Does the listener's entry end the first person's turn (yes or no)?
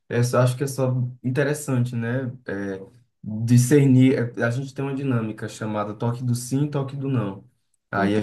no